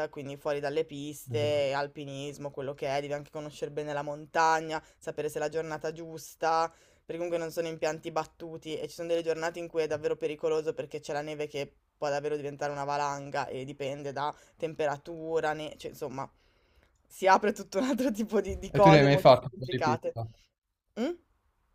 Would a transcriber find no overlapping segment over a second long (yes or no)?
no